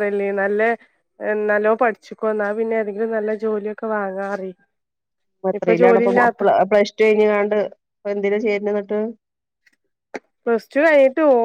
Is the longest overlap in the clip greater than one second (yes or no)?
no